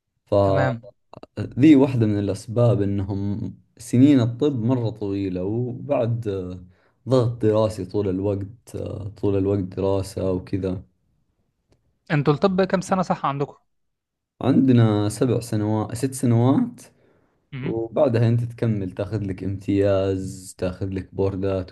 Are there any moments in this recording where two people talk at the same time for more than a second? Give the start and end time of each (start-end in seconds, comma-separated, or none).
none